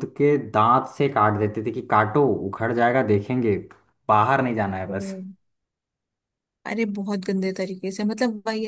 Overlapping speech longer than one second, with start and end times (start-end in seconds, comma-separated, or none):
none